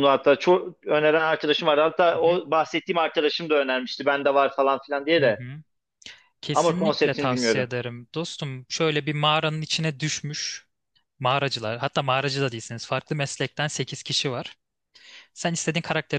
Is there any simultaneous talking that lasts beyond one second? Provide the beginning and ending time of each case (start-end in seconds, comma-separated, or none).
6.5-7.7